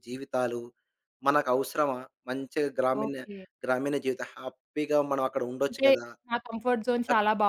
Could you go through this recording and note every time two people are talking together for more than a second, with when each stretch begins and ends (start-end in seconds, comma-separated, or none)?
none